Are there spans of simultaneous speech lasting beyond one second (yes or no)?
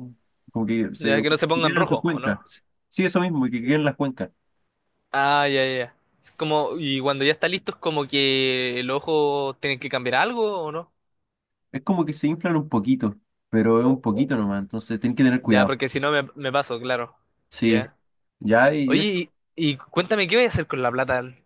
yes